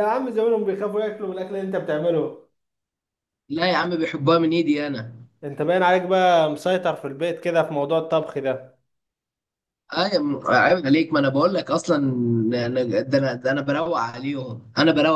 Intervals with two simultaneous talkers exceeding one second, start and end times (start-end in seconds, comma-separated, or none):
none